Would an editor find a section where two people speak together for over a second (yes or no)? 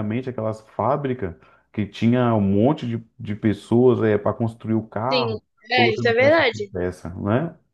yes